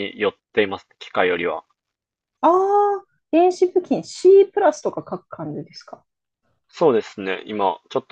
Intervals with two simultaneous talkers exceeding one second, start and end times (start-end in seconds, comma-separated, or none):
none